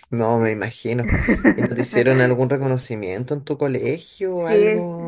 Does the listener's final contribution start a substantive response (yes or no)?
yes